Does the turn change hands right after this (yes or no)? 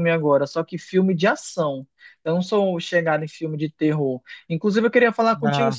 no